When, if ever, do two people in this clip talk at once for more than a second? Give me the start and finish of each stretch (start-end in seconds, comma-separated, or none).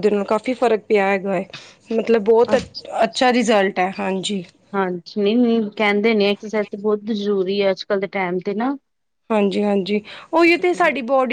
none